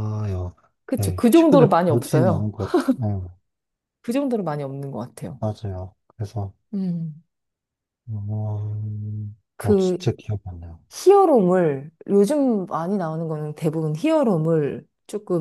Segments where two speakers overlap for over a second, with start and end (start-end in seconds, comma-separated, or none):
0.9-2.5